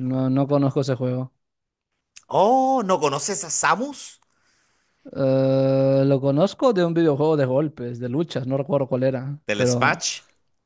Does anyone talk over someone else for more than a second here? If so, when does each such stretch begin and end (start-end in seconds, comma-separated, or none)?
none